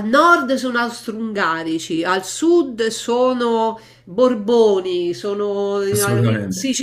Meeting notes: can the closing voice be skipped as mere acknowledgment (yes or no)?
yes